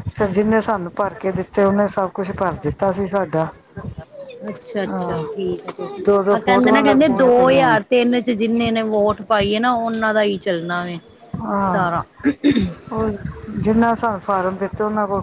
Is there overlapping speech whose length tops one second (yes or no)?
yes